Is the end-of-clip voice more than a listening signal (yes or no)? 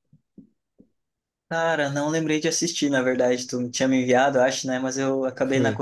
no